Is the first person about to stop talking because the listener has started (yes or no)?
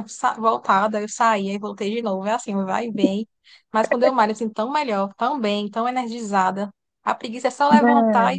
no